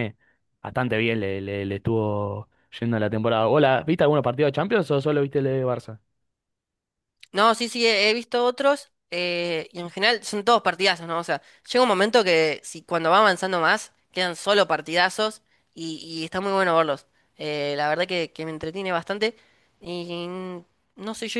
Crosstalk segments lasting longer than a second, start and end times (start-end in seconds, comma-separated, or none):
none